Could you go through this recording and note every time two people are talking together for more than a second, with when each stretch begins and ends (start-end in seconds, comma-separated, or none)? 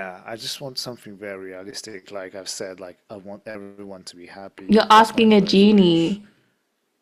4.7-6.2